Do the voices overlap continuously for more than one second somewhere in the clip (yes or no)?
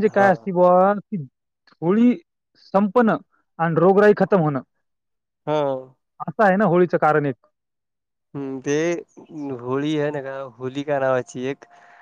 no